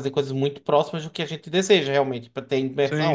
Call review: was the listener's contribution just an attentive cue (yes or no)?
yes